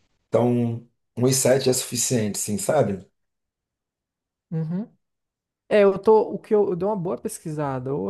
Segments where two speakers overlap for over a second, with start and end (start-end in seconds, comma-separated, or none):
none